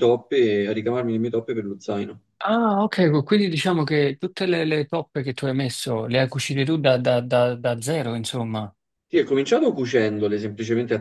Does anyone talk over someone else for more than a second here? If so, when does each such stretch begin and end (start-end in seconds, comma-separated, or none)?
none